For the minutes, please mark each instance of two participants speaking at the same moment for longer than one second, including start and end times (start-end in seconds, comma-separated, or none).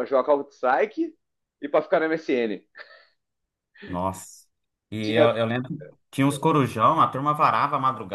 none